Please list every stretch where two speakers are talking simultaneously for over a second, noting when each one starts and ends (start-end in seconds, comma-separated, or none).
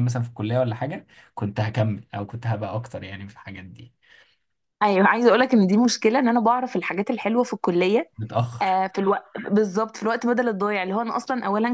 none